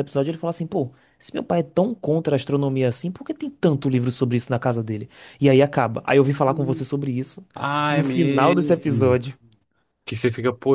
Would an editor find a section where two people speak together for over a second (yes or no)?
yes